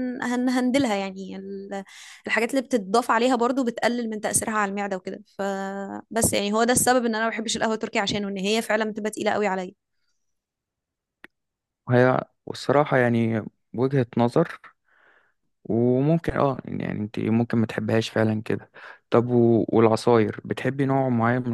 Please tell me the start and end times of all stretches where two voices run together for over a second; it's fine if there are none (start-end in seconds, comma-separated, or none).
none